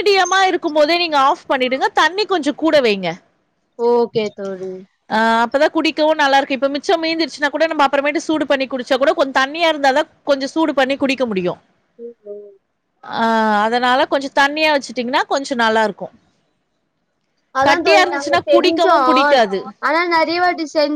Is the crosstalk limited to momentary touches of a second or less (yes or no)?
yes